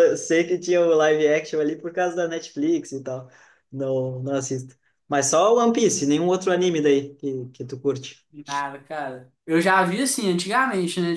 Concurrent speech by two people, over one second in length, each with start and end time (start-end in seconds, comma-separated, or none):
none